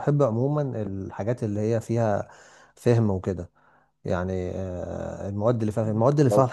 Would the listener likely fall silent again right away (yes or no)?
yes